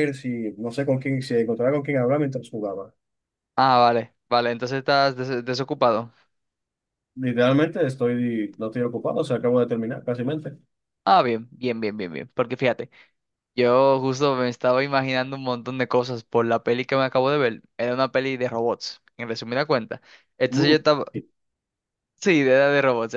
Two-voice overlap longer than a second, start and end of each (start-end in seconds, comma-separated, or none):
none